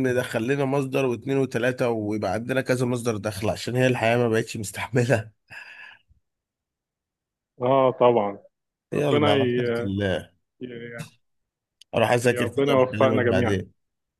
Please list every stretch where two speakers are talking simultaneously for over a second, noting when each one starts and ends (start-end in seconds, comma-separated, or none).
12.3-13.6